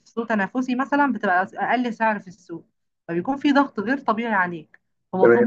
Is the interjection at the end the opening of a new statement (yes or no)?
no